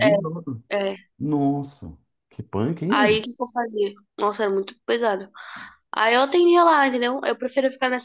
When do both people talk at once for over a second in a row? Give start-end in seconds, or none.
none